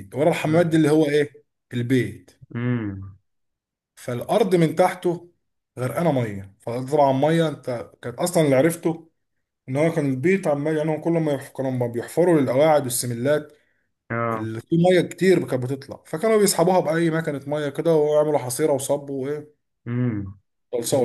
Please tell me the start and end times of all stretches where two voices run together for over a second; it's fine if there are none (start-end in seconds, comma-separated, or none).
none